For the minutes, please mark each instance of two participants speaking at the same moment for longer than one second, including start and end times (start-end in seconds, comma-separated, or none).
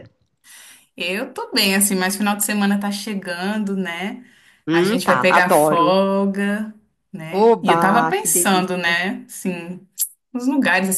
4.7-5.9, 7.3-9.0